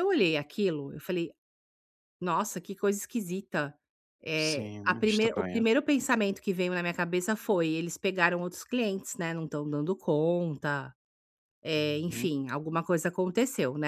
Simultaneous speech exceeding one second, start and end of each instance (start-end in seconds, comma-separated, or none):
4.4-5.6